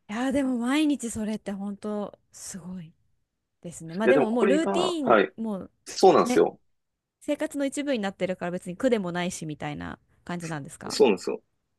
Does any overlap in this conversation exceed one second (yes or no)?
yes